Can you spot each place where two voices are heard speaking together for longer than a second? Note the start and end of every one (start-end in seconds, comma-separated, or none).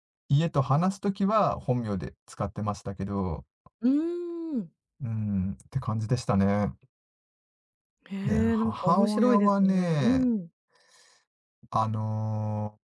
8.2-10.3